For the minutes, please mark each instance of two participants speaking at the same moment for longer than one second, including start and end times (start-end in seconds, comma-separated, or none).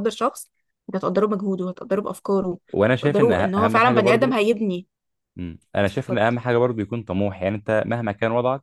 3.0-4.4